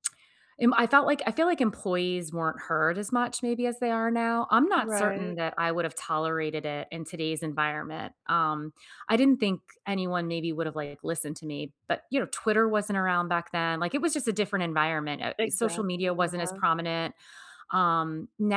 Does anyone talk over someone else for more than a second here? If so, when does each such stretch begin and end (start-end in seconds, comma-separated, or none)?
15.4-16.6